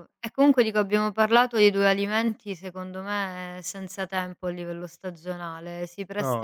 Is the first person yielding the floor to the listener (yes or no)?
no